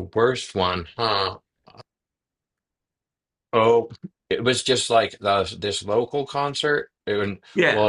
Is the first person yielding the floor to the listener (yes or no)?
no